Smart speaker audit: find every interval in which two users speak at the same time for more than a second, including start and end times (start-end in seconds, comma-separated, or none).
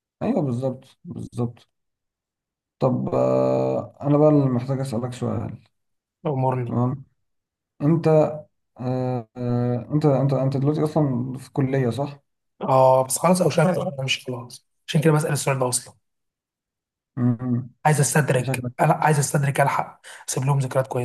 none